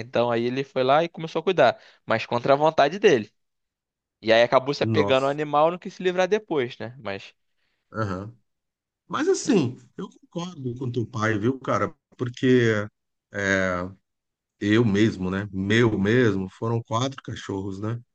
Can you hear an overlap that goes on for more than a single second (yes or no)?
no